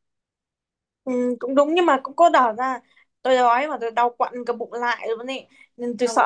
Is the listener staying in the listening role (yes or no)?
yes